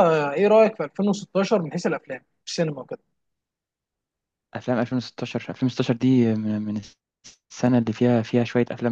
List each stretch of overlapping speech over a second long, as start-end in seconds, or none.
none